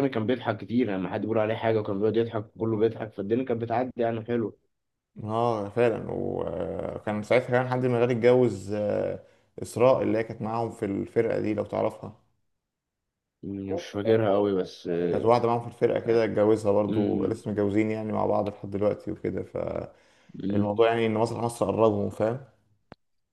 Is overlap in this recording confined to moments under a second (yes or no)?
yes